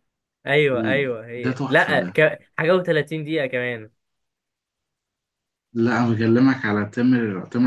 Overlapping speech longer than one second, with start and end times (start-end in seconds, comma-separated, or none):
0.7-2.2